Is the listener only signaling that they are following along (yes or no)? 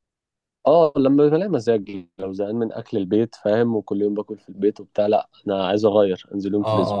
no